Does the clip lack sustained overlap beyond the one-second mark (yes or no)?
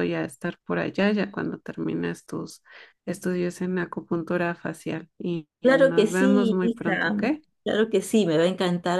no